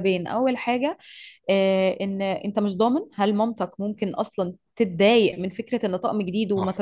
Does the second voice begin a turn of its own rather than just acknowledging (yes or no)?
no